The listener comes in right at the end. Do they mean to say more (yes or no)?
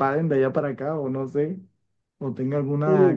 no